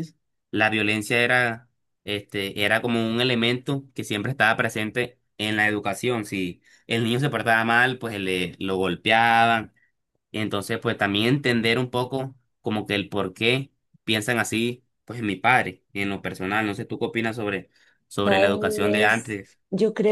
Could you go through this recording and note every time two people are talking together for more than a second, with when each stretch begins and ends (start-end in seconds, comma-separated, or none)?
18.2-19.6